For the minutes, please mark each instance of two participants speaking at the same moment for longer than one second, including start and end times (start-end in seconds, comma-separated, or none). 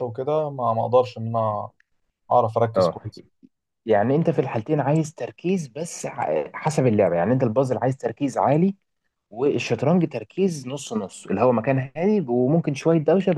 none